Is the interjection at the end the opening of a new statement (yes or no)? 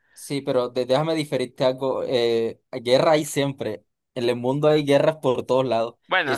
no